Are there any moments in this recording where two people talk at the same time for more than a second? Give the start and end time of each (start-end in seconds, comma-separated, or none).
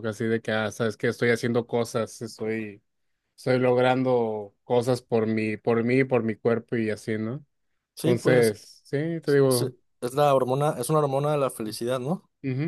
none